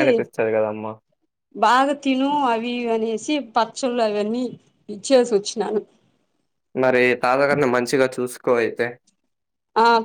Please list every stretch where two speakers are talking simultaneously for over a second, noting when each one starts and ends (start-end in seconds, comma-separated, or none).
none